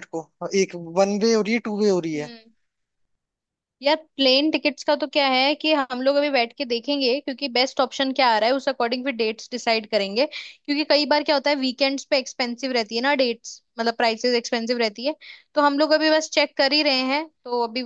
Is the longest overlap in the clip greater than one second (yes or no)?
no